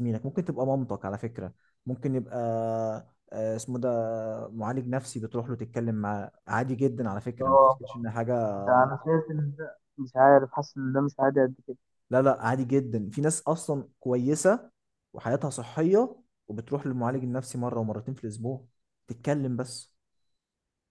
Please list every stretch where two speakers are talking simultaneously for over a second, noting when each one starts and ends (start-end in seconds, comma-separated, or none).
none